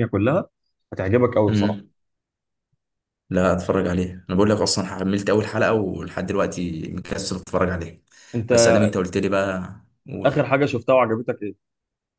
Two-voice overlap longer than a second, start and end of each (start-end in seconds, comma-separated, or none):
none